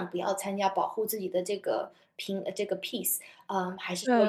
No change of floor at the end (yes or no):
no